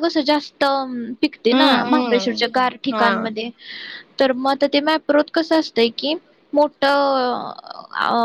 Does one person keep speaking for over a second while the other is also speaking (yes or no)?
yes